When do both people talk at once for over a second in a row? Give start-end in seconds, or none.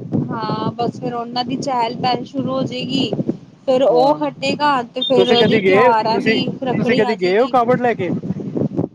5.2-7.5